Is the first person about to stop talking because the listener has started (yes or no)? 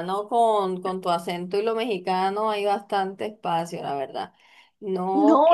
yes